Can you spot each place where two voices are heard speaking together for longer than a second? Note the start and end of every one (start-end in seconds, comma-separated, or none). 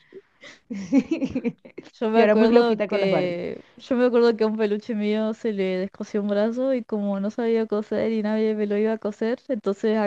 2.1-3.4